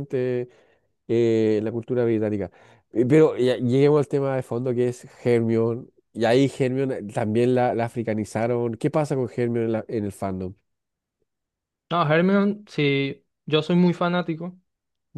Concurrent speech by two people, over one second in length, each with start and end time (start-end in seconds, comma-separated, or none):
none